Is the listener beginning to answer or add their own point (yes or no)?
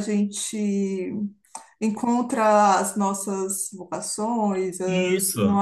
yes